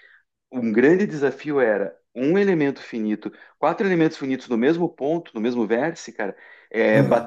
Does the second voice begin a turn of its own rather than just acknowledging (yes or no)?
no